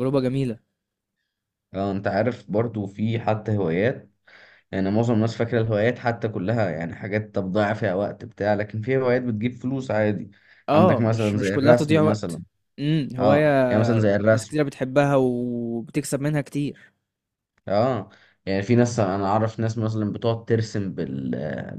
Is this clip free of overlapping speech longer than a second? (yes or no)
no